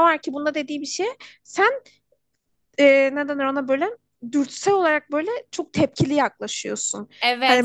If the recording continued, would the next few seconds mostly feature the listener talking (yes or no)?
no